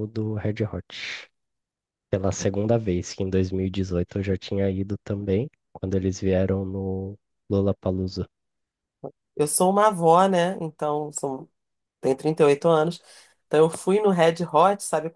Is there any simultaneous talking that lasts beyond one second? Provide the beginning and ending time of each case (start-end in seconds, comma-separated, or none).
none